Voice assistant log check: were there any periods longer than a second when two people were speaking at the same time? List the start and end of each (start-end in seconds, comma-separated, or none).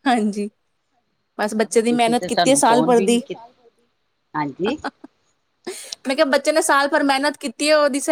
1.9-3.2